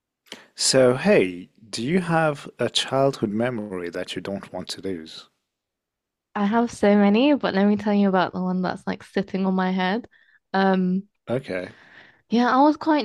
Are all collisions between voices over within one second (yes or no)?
yes